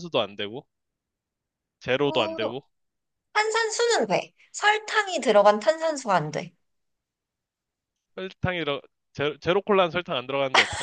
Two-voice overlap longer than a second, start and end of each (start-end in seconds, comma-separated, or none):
none